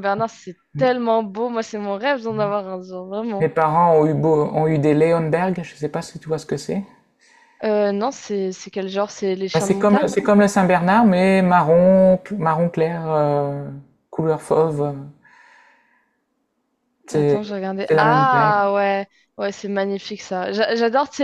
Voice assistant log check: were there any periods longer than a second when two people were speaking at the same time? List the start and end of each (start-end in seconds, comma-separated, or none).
17.1-18.6